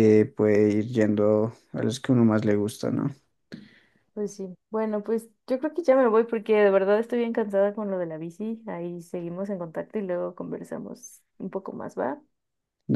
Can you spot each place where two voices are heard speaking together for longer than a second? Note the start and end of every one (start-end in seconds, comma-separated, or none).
none